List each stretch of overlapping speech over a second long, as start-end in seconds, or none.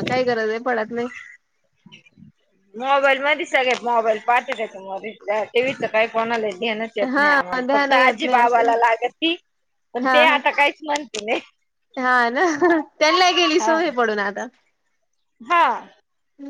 7.2-8.7